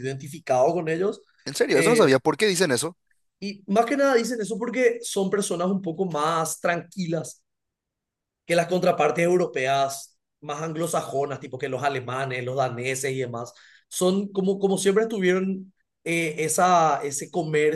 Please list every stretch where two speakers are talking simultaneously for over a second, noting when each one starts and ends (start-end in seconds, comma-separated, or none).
none